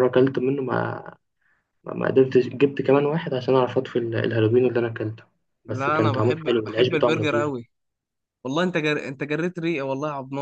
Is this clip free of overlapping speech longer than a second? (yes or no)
no